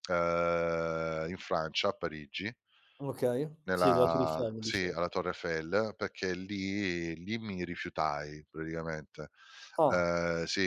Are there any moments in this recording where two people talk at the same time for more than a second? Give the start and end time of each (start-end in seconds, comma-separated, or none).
3.7-5.1